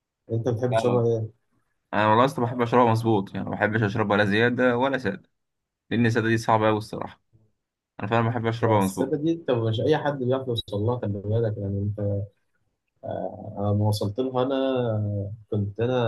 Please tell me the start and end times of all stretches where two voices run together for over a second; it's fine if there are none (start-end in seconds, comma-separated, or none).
none